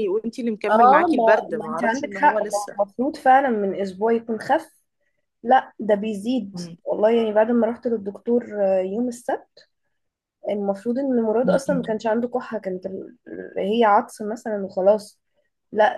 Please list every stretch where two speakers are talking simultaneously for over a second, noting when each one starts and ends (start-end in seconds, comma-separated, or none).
0.7-2.8